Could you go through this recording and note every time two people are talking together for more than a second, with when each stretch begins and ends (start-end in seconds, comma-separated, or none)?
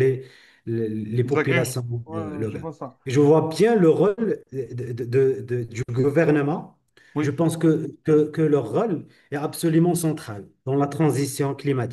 1.2-2.7